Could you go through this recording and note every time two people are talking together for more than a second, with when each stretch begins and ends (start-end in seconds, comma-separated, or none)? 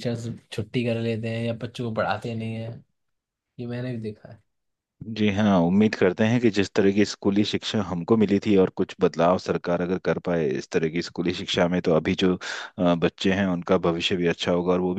none